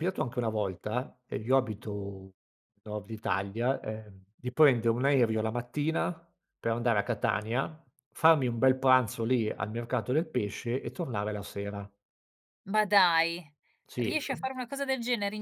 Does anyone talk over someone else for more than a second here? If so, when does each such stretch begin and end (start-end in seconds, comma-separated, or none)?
none